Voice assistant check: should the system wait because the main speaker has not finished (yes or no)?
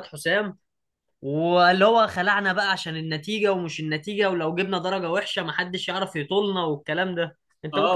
no